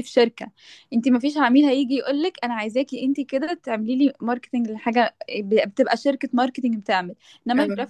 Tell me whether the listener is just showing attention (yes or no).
yes